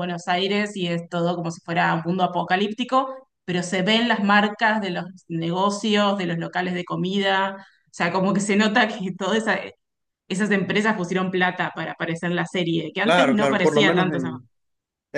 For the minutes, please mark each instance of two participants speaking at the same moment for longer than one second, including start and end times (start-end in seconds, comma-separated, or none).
13.0-14.3